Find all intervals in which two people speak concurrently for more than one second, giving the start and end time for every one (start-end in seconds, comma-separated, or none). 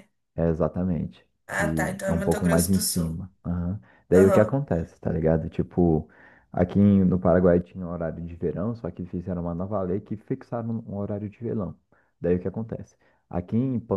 1.5-3.2